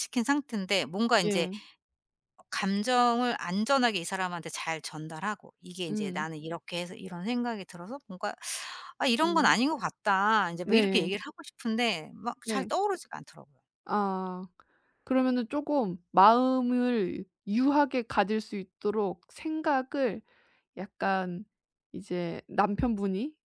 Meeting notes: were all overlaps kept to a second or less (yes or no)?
yes